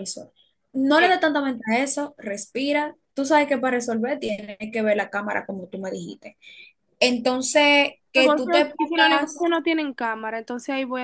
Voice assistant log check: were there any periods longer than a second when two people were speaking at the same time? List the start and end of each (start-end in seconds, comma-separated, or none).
8.1-9.4